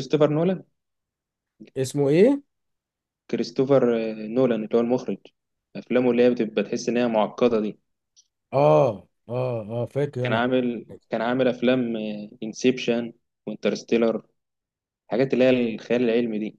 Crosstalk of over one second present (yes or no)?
no